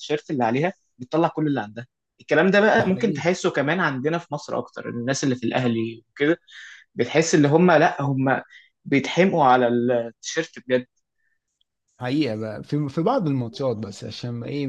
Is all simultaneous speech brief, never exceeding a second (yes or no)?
yes